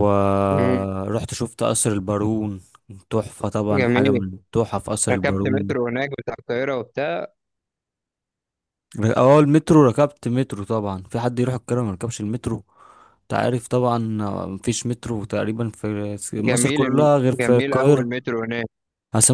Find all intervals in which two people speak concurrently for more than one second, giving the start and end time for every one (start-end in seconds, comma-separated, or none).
16.5-18.1